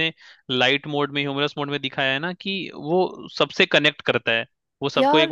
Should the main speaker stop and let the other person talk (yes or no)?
no